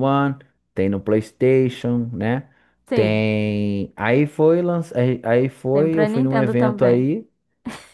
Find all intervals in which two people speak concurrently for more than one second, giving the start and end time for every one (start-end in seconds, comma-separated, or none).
5.7-7.1